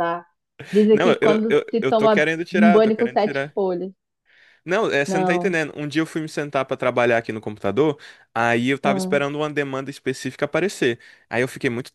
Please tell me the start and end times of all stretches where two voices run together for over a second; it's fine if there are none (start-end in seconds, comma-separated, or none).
0.9-3.6